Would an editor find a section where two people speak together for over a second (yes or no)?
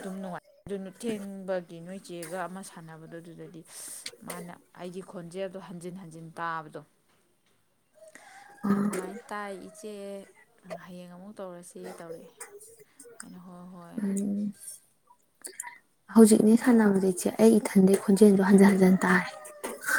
no